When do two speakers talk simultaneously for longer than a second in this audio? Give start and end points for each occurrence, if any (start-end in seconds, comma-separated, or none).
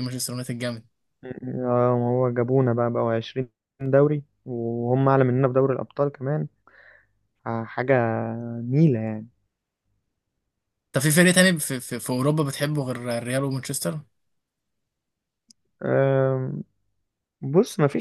none